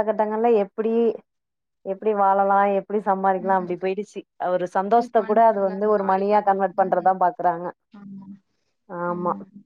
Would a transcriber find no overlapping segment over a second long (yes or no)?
no